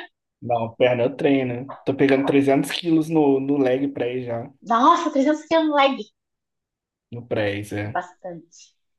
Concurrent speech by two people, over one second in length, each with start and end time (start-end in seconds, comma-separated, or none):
none